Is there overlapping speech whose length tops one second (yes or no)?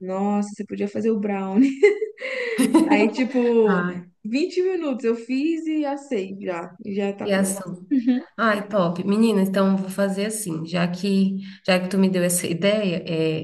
no